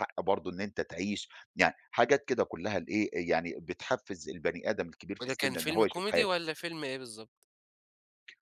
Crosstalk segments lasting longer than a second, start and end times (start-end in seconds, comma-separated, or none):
5.2-6.4